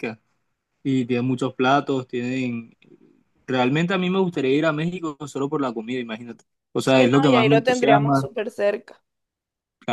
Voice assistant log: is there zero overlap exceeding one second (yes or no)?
no